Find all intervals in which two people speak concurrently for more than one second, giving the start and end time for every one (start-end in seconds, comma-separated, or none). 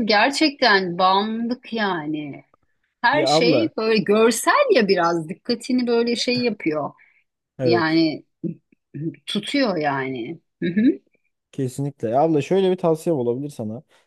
none